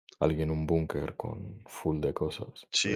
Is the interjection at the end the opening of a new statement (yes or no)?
yes